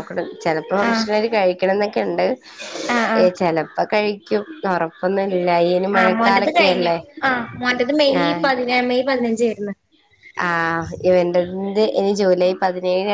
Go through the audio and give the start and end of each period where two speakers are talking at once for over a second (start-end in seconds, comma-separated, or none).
none